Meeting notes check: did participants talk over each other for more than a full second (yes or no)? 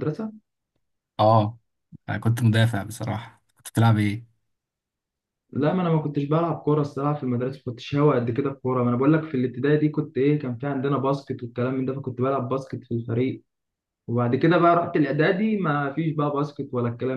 no